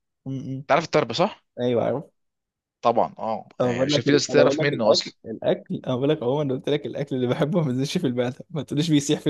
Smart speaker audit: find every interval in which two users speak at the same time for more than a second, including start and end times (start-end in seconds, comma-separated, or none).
3.6-5.2